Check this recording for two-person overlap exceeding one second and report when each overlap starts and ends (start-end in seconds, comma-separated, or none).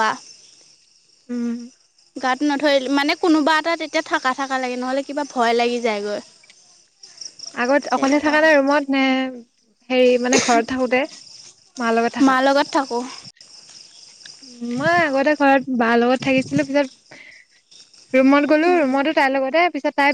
none